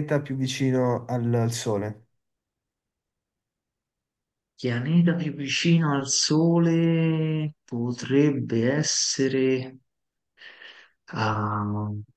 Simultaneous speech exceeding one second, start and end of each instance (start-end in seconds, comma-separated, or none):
none